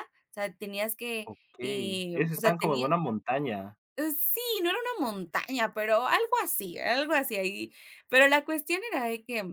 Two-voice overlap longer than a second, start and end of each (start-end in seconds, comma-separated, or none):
1.2-2.9